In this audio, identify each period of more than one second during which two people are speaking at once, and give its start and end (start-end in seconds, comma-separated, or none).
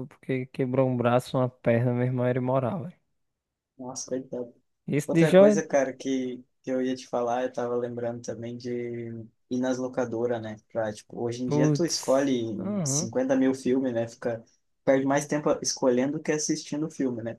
11.4-13.1